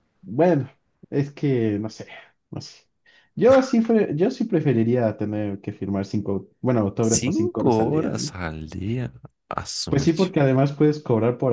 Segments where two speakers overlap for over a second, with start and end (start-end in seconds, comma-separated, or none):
7.0-8.3